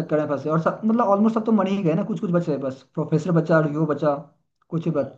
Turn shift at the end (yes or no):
no